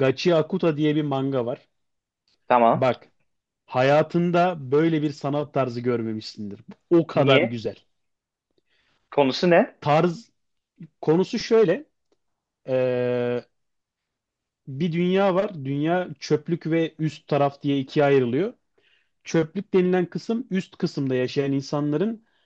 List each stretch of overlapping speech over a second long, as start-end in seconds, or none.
none